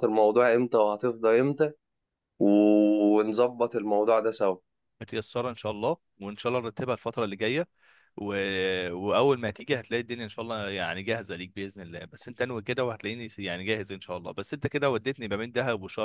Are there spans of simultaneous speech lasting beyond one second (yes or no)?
no